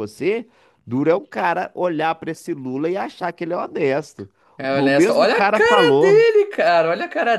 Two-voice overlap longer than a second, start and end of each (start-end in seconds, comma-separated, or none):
4.6-6.2